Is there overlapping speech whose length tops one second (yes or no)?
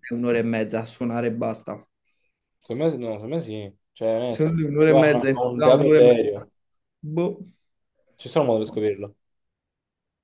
yes